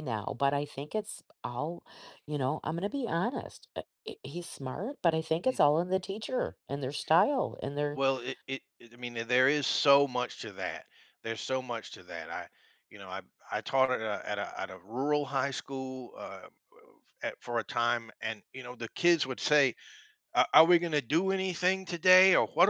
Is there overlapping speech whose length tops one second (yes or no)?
no